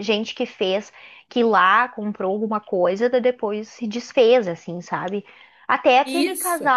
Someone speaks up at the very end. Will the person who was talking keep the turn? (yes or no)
yes